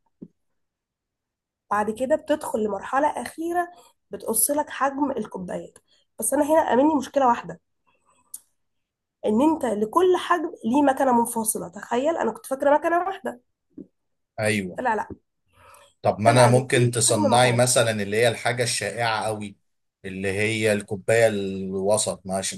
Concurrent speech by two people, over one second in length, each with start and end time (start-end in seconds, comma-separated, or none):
16.2-17.6